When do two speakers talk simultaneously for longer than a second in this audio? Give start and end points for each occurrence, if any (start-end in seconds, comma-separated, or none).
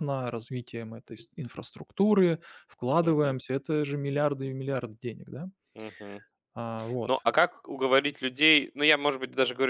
none